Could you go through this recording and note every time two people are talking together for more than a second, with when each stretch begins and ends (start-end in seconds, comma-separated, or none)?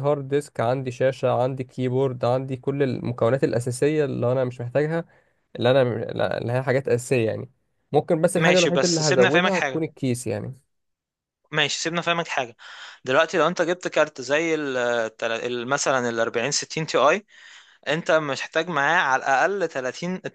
8.4-9.8